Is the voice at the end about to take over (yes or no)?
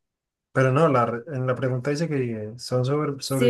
yes